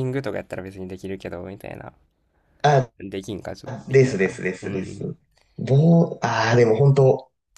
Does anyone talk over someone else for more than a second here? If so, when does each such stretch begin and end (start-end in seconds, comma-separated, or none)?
3.9-5.2